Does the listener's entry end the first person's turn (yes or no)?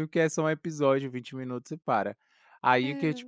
no